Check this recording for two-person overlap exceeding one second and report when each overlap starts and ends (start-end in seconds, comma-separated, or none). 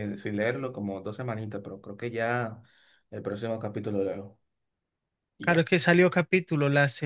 none